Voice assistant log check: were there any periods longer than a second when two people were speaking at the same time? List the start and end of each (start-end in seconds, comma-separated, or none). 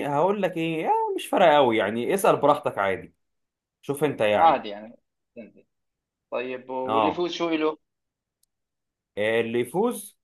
none